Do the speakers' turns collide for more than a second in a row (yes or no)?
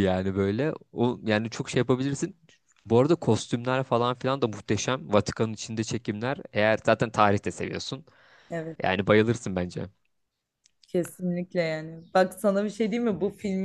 no